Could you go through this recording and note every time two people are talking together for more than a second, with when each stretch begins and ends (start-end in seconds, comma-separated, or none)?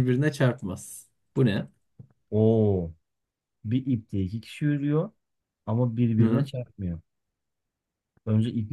none